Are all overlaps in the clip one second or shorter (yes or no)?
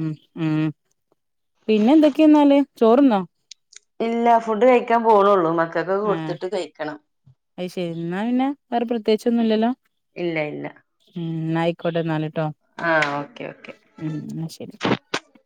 yes